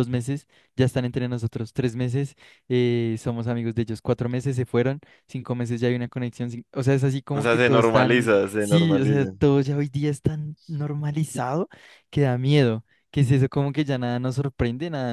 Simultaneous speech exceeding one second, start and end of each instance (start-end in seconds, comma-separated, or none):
7.3-9.3